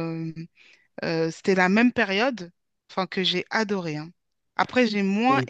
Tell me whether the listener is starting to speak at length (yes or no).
no